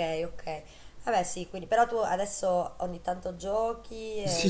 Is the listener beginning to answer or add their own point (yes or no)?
yes